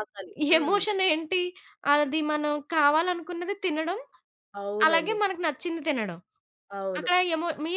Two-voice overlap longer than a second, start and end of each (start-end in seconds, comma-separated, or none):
none